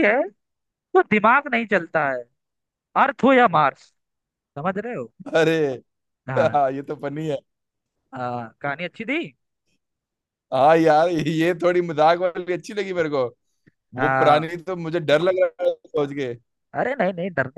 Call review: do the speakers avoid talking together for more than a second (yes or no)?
yes